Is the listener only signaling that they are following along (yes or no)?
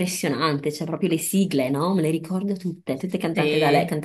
yes